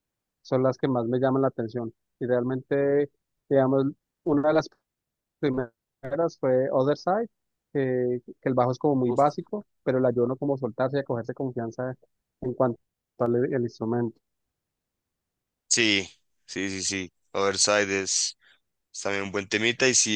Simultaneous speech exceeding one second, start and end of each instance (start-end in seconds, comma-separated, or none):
none